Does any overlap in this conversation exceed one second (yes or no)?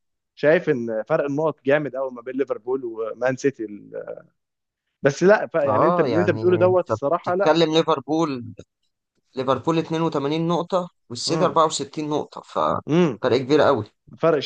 yes